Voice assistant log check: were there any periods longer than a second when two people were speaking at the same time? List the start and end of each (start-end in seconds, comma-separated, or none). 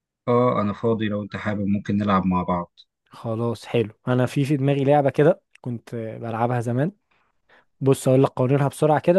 none